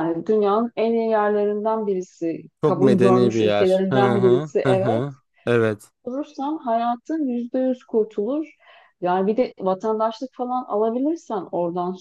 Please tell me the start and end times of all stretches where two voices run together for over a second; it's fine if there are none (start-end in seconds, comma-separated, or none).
2.6-5.0